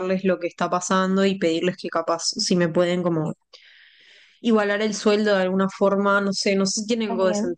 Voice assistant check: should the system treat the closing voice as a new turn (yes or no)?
no